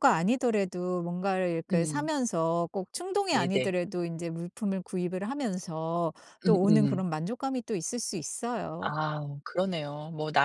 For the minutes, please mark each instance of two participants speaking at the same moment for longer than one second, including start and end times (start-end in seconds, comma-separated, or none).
none